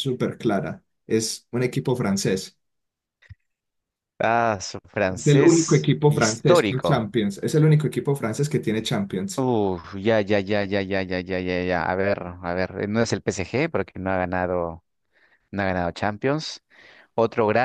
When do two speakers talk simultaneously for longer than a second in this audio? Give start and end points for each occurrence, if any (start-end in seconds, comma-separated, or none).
5.1-7.1